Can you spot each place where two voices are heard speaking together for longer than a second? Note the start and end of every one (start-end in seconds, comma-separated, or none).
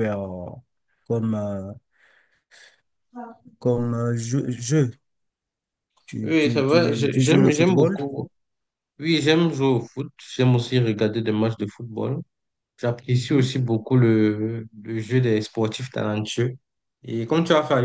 6.2-8.0